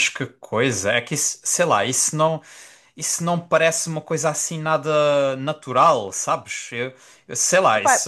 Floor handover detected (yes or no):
no